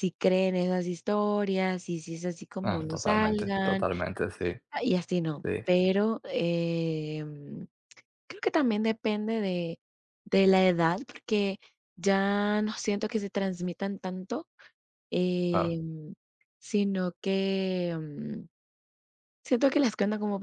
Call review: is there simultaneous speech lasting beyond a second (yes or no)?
yes